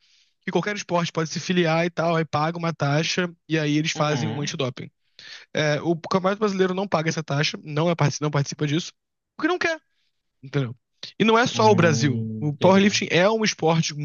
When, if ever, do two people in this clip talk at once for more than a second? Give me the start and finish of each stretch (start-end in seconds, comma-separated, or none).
11.5-12.9